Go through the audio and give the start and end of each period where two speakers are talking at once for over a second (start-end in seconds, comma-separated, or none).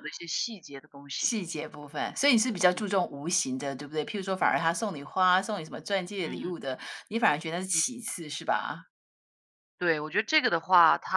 none